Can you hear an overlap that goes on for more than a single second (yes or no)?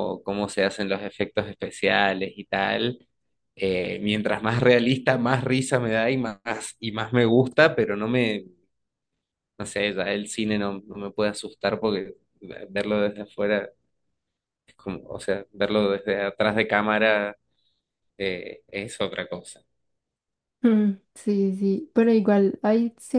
no